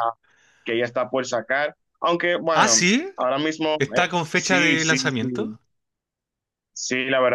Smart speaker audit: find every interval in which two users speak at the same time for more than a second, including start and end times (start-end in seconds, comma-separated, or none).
3.8-5.3